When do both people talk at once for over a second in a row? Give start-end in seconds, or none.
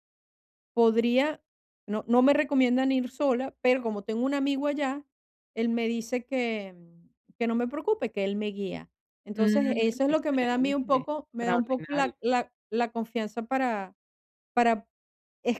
9.3-12.1